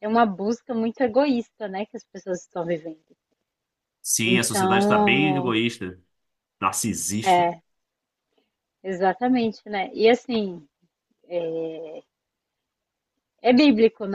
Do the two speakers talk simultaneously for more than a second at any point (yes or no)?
yes